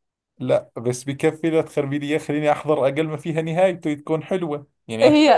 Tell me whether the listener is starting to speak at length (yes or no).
yes